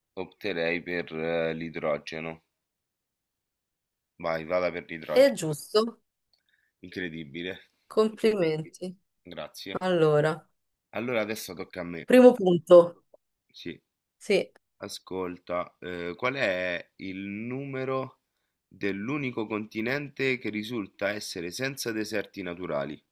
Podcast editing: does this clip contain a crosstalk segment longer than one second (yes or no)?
no